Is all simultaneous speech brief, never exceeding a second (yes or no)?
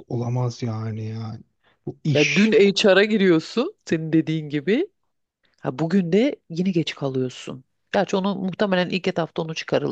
yes